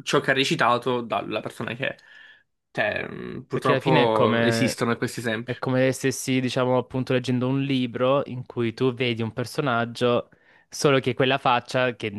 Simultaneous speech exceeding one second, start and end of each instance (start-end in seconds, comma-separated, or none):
3.5-4.8